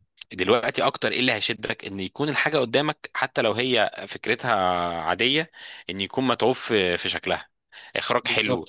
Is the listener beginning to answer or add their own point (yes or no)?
no